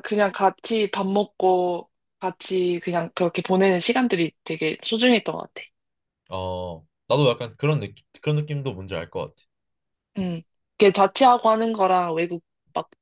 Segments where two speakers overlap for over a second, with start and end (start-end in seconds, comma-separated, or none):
none